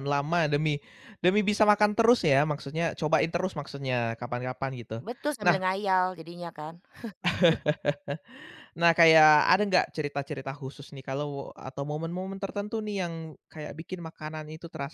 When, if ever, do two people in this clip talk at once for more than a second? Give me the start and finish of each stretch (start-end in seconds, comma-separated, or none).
none